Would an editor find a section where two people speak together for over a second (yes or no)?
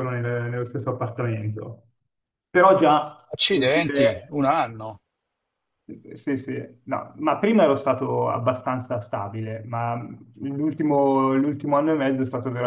yes